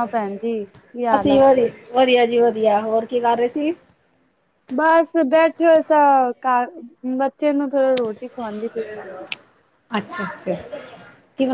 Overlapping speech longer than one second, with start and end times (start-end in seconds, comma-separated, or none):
none